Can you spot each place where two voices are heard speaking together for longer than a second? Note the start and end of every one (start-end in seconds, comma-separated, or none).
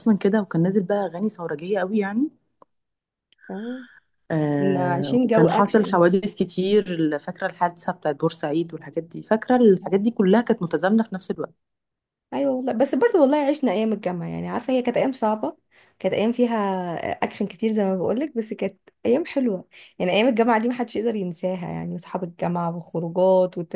4.6-6.0